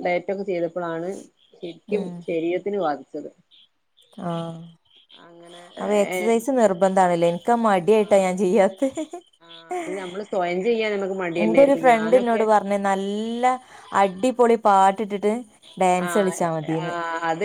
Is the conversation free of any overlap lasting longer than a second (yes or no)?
yes